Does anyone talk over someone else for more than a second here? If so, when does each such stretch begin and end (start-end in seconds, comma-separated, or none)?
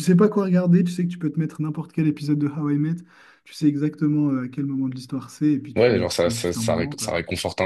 5.8-7.1